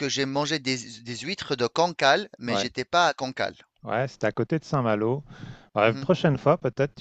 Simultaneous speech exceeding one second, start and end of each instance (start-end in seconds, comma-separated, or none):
none